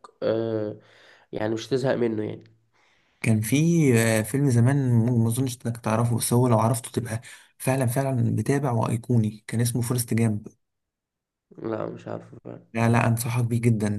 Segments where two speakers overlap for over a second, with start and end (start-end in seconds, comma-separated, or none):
none